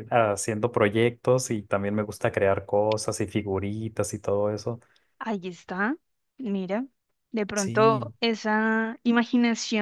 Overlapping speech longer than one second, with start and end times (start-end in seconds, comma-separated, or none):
none